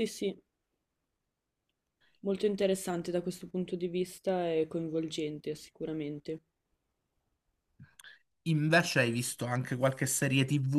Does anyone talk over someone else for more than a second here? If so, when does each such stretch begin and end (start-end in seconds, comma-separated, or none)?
none